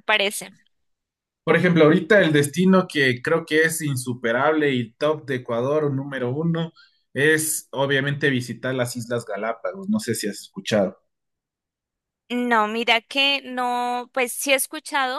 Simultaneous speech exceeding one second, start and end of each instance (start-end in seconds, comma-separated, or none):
none